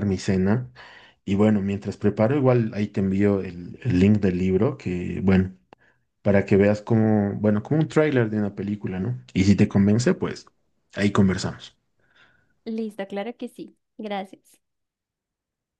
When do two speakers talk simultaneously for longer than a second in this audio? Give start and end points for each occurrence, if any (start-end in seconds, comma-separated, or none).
none